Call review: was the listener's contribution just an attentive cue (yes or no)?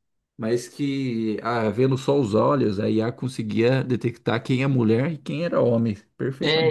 no